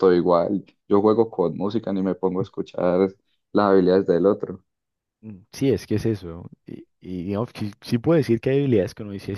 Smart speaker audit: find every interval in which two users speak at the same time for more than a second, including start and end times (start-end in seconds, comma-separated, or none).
none